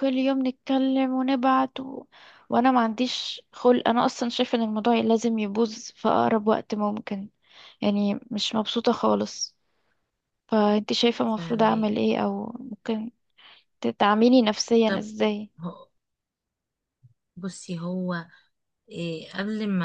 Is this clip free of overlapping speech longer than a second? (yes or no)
yes